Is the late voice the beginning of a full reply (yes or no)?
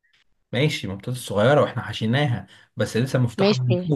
yes